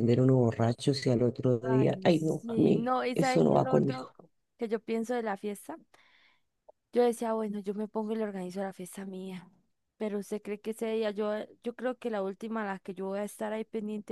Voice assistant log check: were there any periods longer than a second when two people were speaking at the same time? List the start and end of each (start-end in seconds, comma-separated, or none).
1.6-4.1